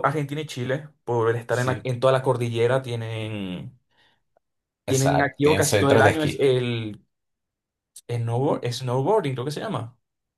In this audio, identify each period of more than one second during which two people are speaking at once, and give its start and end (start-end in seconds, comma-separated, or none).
4.9-6.5